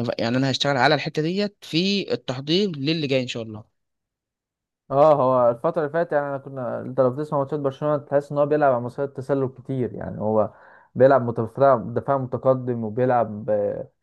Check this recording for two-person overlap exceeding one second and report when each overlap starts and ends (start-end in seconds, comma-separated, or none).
none